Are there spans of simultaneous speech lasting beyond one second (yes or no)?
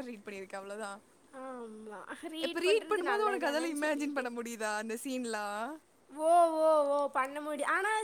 yes